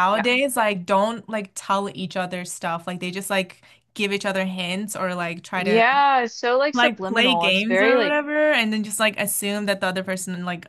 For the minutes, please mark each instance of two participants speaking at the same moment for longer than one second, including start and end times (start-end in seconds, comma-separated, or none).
6.7-8.2